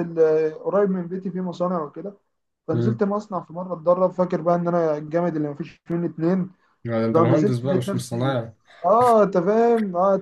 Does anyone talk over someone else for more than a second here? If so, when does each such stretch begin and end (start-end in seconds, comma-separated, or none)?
7.1-8.4